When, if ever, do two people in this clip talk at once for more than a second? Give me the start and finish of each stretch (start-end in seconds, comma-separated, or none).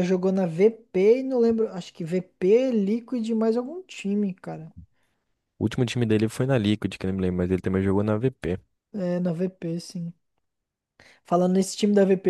none